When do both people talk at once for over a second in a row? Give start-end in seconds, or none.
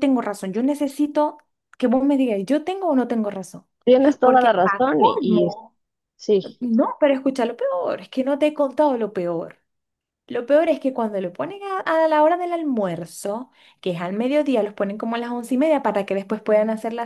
4.2-5.5